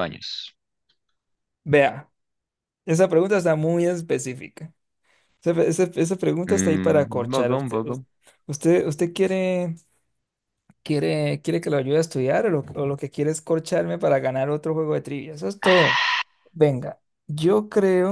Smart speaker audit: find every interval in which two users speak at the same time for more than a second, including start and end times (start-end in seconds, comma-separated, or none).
6.5-7.8